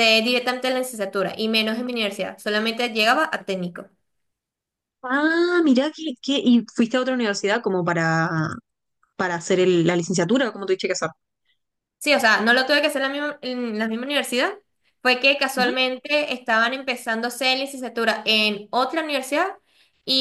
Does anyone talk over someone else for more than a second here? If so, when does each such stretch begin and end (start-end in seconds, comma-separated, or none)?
none